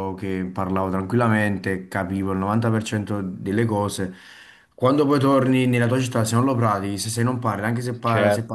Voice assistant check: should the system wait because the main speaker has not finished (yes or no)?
yes